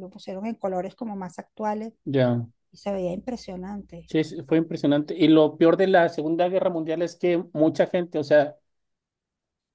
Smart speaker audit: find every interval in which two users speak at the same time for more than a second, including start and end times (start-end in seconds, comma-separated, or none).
none